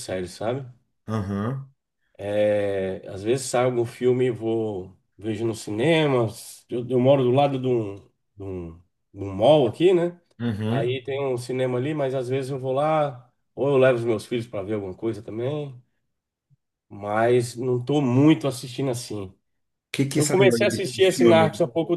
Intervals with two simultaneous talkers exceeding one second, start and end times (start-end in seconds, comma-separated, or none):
20.1-21.4